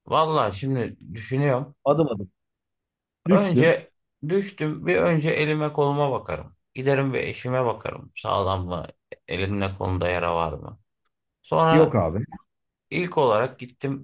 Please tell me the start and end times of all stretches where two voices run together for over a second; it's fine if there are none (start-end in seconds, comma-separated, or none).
none